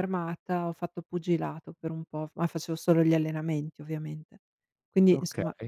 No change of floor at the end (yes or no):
yes